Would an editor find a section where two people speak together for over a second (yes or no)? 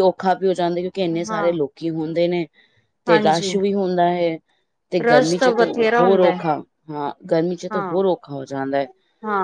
yes